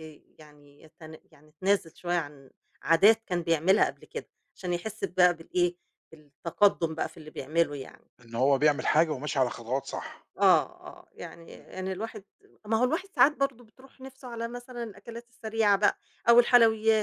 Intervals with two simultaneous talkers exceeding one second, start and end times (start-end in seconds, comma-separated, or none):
none